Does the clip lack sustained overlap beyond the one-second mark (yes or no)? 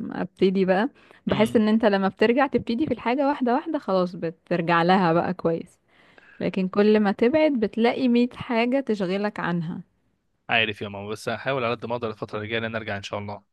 yes